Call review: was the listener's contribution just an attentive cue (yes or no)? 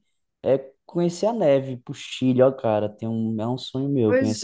no